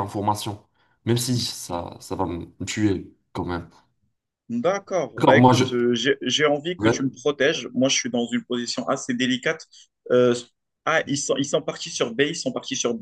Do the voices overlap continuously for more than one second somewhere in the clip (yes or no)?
no